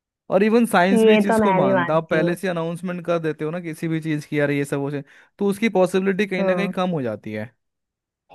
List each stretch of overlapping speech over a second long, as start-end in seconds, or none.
0.9-2.4